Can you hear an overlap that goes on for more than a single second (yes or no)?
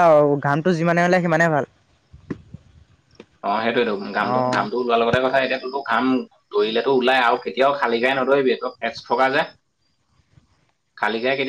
no